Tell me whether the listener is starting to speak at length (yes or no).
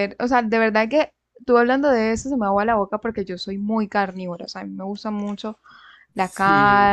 no